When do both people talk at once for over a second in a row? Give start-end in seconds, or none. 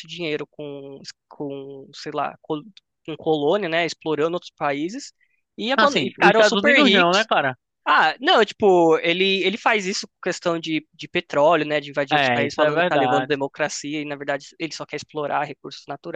5.8-7.3, 12.1-13.4